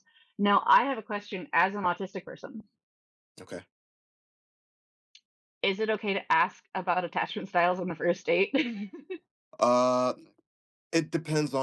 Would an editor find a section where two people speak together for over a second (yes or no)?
no